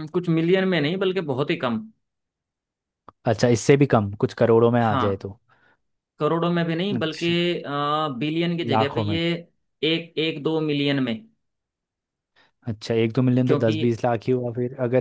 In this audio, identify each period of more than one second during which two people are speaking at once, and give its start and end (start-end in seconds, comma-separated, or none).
none